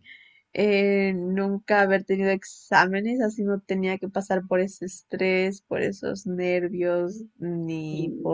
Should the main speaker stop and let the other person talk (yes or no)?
no